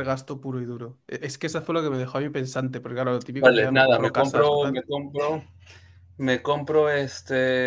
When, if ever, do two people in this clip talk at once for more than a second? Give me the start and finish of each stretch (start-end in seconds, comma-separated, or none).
3.4-4.9